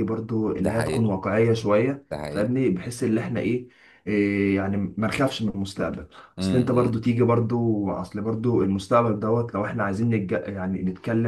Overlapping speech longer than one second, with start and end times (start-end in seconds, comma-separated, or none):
none